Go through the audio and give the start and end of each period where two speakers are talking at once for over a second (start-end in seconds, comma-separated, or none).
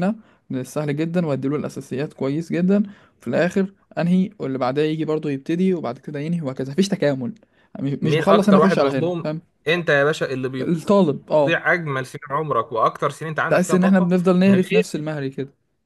8.0-9.3, 13.5-15.0